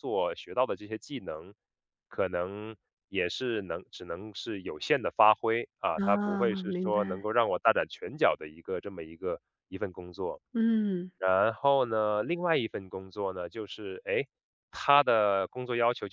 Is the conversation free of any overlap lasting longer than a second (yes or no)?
no